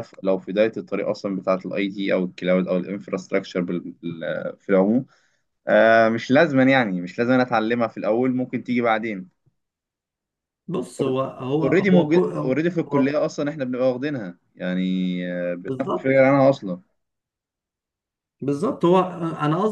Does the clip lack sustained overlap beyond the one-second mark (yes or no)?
no